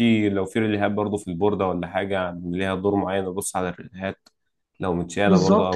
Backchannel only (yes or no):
no